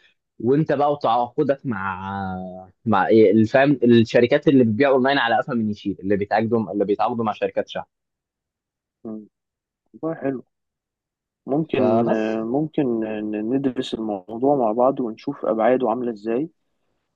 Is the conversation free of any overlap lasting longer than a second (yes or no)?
yes